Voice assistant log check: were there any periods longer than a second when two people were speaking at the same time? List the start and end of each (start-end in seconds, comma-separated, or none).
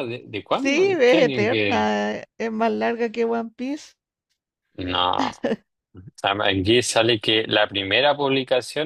0.5-1.9